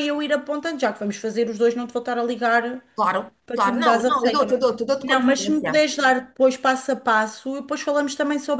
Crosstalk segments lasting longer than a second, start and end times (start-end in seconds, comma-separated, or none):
3.5-5.8